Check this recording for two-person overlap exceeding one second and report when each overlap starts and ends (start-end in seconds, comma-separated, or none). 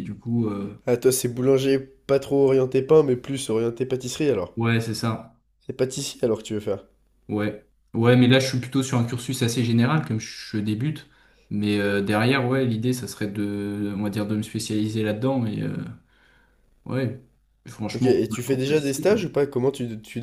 18.0-19.3